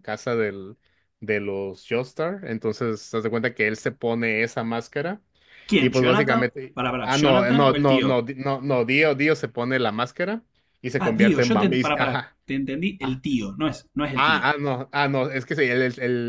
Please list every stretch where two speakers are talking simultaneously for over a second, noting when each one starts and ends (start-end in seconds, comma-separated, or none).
5.8-8.2, 11.0-12.4